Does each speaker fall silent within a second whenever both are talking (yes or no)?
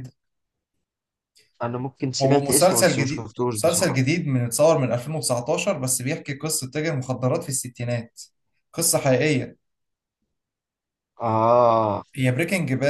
no